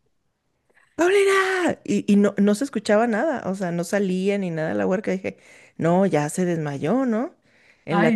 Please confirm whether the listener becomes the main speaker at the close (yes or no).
no